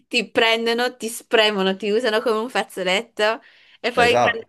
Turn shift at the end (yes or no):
no